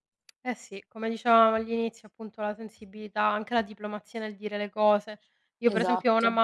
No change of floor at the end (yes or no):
yes